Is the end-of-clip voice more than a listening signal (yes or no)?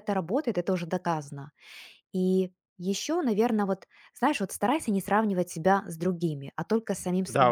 yes